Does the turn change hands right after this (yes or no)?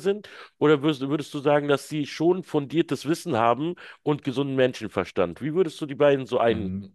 yes